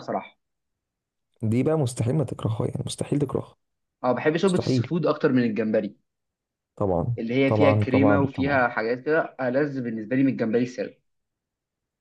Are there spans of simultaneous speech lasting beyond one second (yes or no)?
yes